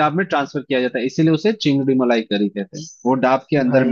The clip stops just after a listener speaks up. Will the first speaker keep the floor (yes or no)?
no